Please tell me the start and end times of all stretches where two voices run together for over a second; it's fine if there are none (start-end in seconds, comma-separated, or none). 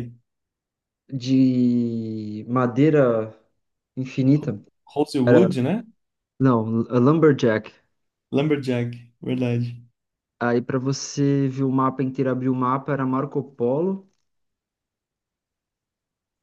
none